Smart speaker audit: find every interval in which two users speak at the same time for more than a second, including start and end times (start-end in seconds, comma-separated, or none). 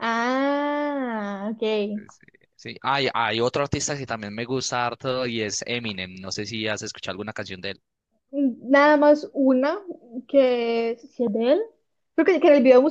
none